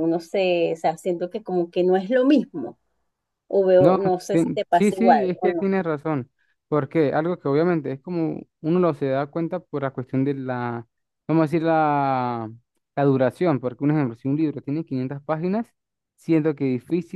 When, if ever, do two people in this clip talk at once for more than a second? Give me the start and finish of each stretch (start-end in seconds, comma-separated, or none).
3.8-5.7